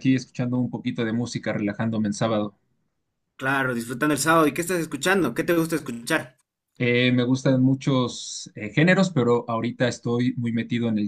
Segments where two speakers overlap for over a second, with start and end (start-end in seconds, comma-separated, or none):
none